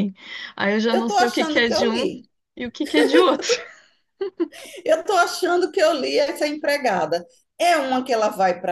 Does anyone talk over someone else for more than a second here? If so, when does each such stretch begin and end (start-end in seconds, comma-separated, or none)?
0.9-2.1